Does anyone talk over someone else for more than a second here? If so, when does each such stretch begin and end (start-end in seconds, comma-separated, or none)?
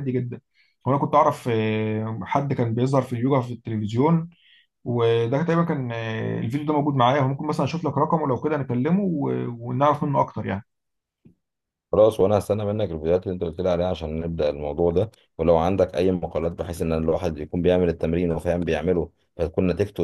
none